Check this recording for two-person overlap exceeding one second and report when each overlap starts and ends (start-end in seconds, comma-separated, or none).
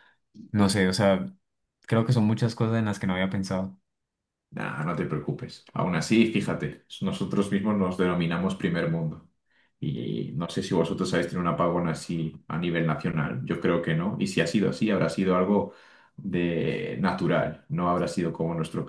none